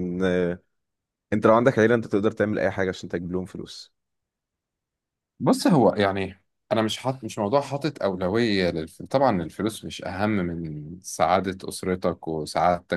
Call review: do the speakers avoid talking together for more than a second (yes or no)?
yes